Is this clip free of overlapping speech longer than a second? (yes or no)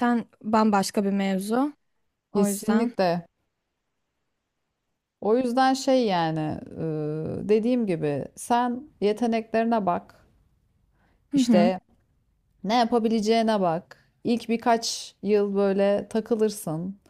yes